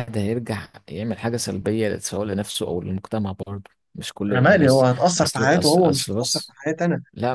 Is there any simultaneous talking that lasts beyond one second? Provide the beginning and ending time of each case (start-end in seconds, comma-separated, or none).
4.3-6.6